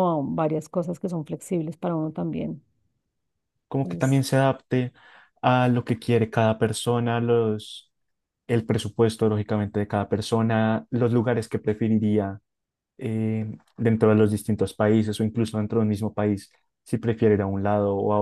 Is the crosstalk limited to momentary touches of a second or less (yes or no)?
yes